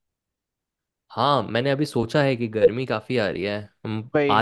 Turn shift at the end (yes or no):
no